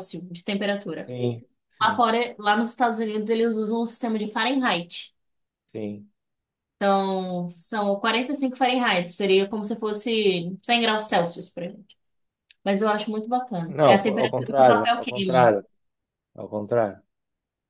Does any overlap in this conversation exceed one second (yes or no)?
yes